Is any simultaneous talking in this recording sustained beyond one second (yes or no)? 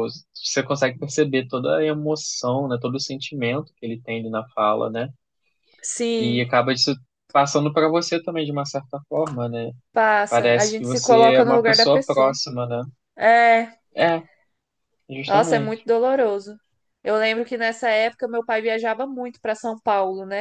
yes